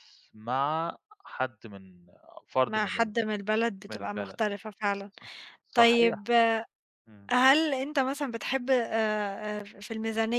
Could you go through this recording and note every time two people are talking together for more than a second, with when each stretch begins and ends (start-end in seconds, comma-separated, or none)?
none